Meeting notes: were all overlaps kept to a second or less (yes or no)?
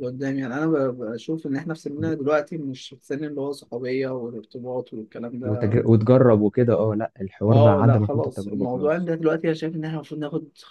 no